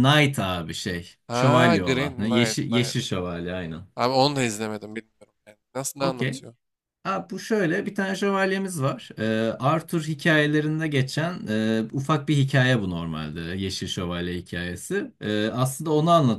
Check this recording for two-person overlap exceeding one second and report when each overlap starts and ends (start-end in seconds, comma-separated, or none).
1.3-3.0